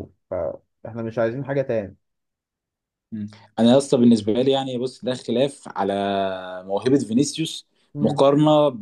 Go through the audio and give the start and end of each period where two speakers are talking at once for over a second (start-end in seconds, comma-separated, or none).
none